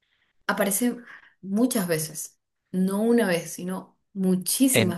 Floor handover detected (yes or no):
yes